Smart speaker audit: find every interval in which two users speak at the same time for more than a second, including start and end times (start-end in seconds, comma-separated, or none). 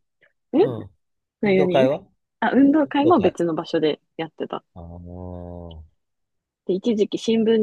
none